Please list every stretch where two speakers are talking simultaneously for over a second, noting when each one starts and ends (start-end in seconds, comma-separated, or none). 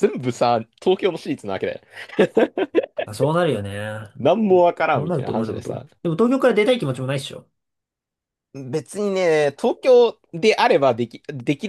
4.5-5.9